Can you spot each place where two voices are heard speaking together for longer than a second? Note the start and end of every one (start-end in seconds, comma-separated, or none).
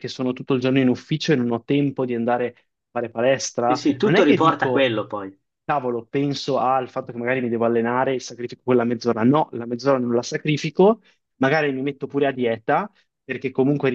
3.6-4.9